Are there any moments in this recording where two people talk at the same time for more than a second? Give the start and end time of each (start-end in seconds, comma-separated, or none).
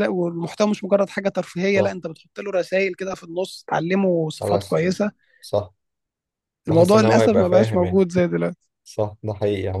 6.7-8.1